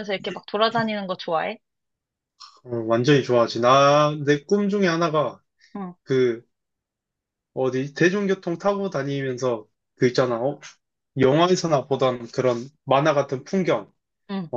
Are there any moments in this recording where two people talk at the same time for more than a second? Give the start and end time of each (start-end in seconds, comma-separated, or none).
none